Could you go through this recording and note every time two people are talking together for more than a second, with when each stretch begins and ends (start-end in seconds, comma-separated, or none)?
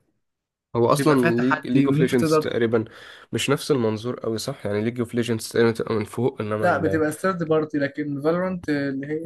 0.9-2.4